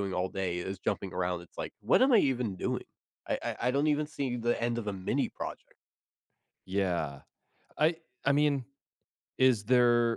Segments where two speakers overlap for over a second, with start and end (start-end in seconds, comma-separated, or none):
none